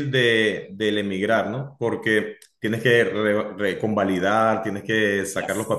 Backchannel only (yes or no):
yes